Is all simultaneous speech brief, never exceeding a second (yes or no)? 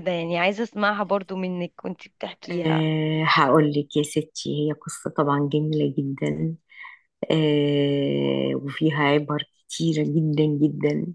yes